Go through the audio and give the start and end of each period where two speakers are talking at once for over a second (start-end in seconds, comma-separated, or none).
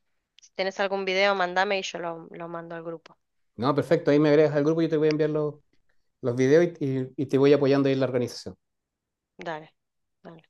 none